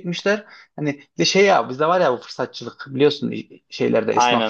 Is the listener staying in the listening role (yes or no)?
yes